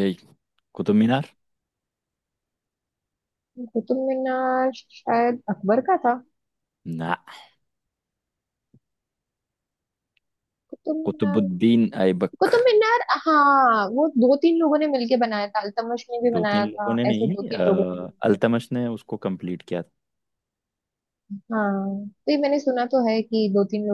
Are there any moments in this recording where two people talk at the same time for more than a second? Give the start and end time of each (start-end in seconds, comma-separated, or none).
16.3-18.4